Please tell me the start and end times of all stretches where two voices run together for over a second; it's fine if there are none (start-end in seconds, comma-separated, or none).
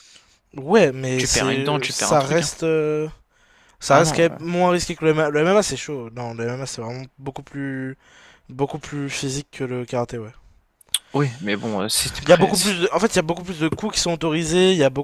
1.1-2.5